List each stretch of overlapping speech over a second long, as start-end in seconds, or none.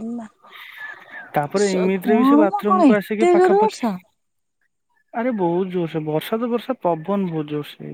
1.6-3.8